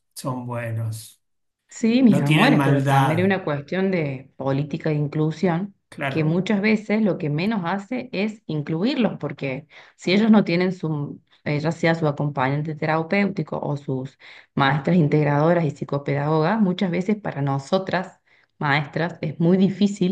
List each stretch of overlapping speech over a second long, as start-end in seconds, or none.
2.1-3.4